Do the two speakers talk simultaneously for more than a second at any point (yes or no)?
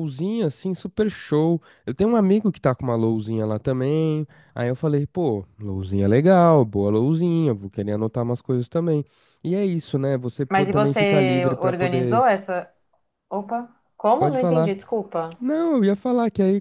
yes